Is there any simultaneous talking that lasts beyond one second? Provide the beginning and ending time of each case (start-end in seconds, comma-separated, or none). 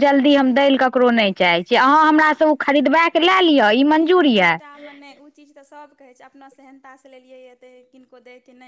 none